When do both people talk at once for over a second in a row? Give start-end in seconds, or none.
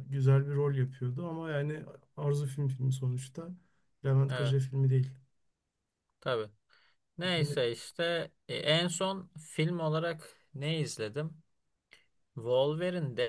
none